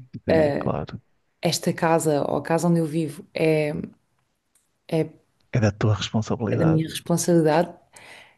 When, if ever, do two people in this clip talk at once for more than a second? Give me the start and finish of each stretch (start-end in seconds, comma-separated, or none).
none